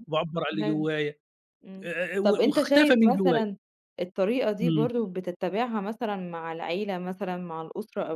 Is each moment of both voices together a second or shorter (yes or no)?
no